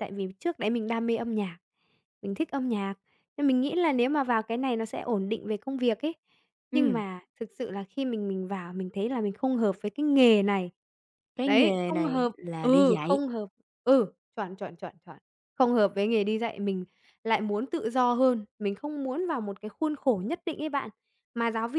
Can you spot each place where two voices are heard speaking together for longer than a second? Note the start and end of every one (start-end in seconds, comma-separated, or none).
11.4-13.2